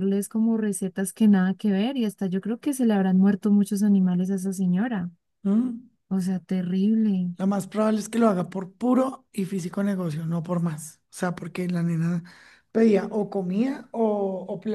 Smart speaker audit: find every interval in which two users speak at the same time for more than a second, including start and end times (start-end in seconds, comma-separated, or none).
none